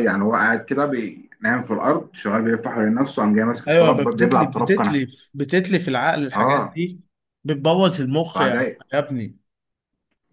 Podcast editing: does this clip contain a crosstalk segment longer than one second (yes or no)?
yes